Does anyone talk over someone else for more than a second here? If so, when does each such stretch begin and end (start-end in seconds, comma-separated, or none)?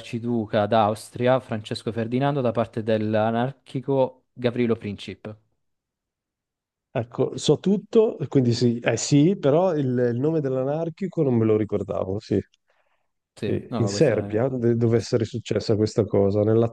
13.4-15.1